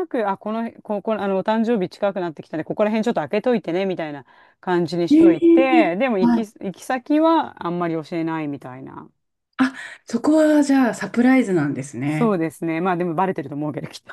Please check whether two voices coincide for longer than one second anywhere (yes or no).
yes